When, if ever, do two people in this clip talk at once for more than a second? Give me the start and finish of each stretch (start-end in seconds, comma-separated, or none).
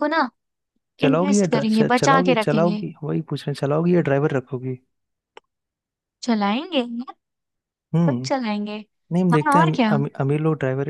1.0-2.8